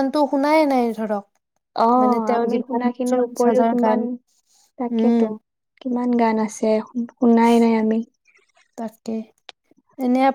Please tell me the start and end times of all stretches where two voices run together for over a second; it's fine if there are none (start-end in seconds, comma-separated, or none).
2.0-4.0